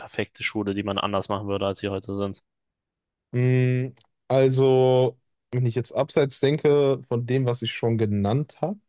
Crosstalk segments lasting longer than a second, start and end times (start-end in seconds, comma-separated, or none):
none